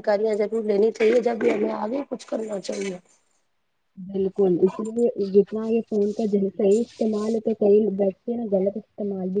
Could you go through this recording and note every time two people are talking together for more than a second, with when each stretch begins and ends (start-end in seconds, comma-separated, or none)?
none